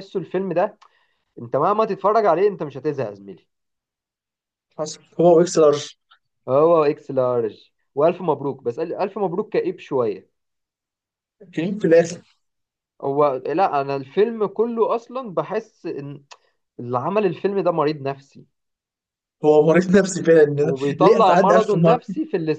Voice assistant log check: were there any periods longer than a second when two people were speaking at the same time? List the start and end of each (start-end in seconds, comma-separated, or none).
20.6-22.0